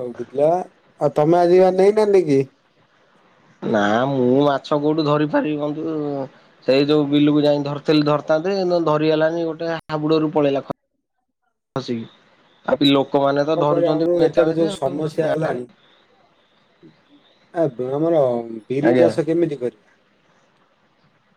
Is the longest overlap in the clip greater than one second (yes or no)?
yes